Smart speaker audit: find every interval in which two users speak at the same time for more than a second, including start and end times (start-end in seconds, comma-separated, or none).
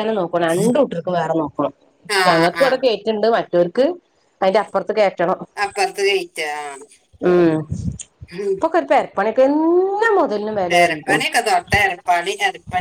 none